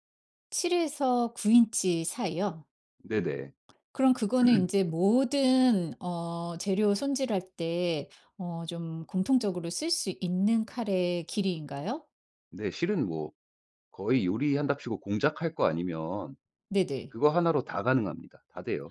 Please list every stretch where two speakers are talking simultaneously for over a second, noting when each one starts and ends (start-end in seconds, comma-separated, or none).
none